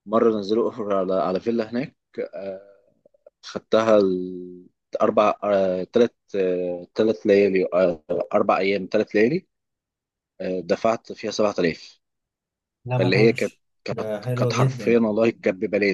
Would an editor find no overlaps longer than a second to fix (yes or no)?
no